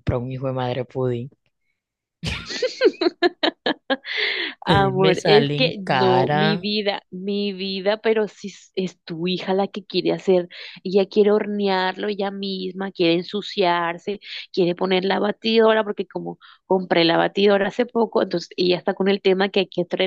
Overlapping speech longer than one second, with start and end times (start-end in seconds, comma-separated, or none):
4.7-6.7